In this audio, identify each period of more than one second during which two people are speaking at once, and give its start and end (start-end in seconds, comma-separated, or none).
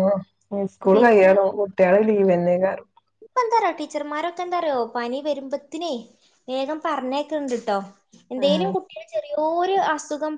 none